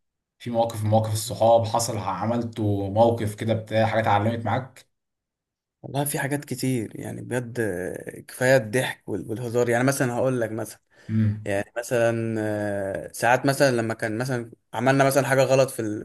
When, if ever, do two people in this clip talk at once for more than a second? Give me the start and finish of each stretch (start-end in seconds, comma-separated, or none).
none